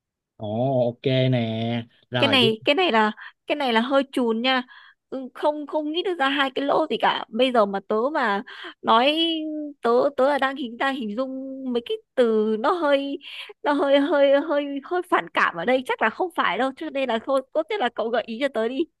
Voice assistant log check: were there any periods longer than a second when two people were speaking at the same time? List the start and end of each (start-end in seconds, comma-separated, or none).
none